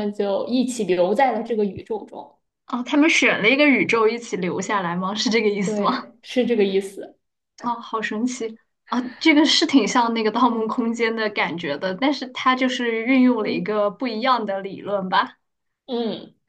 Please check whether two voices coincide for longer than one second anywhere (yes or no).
no